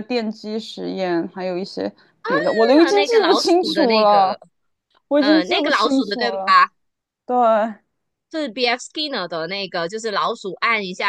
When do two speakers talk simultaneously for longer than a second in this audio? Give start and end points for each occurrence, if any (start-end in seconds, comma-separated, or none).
2.8-4.4, 5.2-6.5